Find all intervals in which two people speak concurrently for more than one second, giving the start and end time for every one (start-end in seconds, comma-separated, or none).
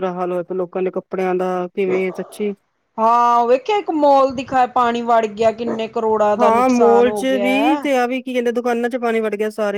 6.4-7.8